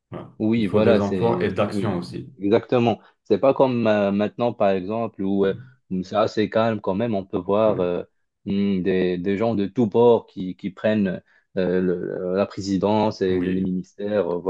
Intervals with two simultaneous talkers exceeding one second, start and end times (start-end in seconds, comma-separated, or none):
0.6-2.0